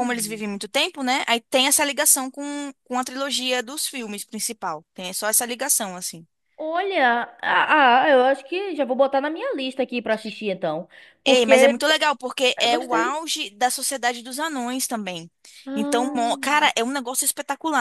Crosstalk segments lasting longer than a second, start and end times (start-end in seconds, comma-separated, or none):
none